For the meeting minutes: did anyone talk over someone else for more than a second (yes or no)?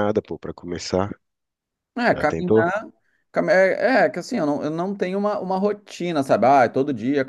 no